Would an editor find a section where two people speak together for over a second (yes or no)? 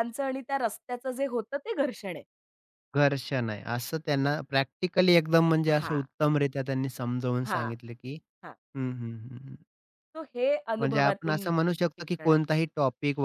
yes